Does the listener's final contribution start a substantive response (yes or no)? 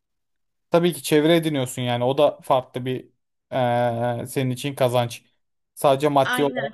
yes